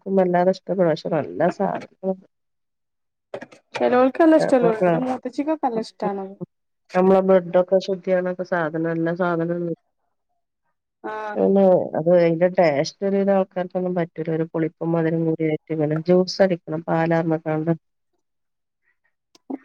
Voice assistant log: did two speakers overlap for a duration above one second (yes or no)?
no